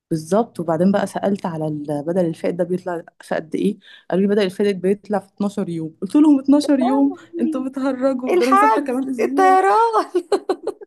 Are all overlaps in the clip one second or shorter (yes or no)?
no